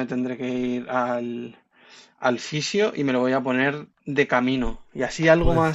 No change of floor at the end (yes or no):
yes